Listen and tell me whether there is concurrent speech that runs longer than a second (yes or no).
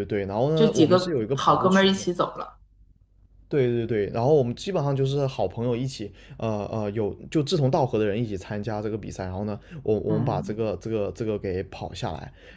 yes